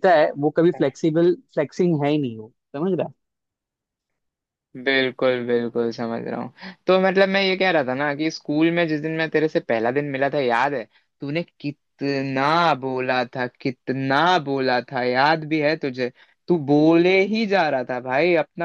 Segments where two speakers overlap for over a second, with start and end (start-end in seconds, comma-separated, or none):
none